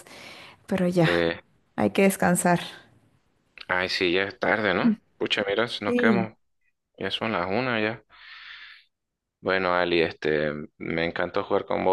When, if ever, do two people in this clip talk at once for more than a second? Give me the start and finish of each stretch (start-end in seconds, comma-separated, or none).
none